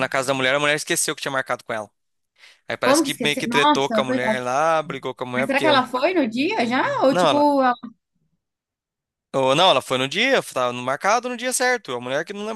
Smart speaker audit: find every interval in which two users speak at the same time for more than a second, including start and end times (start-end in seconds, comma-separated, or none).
2.8-4.4